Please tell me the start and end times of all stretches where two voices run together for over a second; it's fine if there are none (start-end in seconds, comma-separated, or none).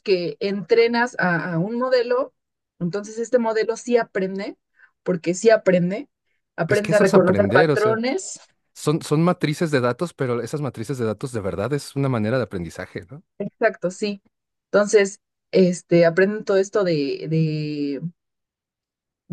6.7-8.0